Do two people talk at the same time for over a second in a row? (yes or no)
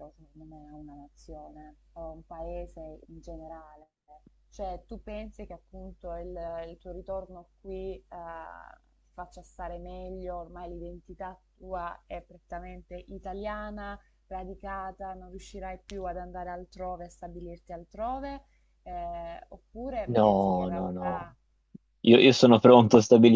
yes